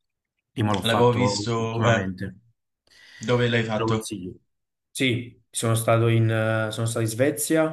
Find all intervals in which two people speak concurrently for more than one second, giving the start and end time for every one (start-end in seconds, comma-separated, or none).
0.8-2.1